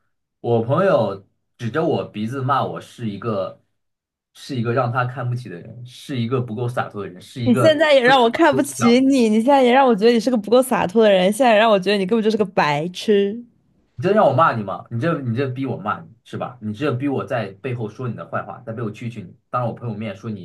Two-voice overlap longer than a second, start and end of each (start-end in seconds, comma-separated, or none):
7.4-9.0